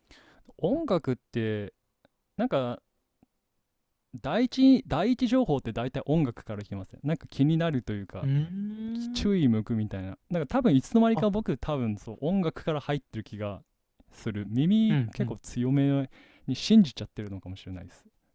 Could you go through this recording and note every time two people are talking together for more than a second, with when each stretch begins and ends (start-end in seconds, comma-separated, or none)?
none